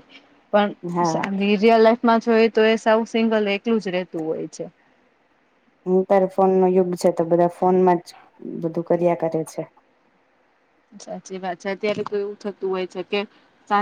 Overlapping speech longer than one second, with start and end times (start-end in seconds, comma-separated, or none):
none